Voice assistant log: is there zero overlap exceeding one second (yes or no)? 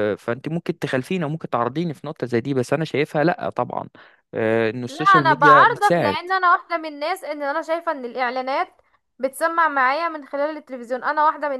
no